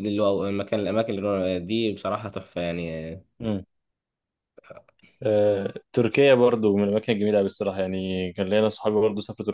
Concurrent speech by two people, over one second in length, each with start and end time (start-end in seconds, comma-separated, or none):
none